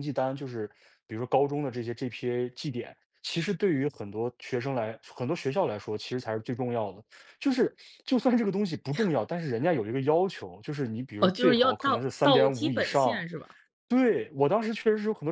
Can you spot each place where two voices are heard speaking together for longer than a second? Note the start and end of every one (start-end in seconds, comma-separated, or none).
11.2-13.2